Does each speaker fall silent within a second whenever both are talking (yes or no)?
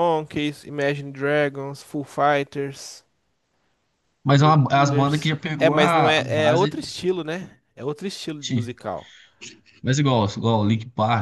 no